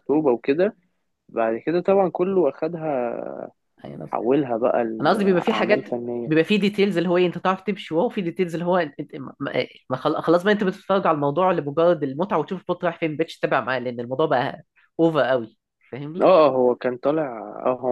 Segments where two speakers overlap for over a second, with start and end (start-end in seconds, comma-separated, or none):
5.0-6.3